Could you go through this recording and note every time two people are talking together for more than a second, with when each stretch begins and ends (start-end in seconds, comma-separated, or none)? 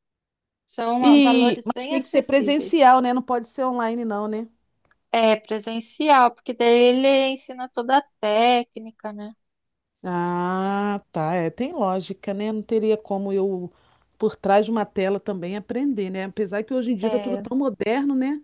1.0-2.8